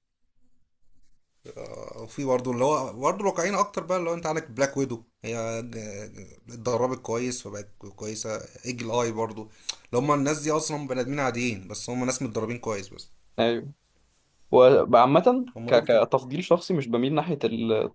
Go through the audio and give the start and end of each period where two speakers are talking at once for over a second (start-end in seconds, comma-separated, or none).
none